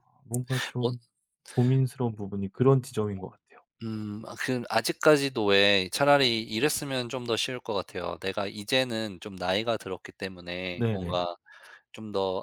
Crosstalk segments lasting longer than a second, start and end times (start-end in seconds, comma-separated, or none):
none